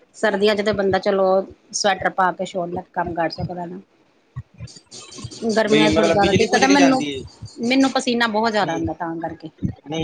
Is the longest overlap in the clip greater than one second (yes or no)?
yes